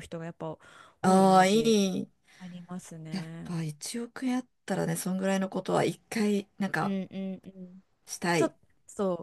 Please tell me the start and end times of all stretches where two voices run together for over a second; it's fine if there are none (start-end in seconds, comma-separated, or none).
none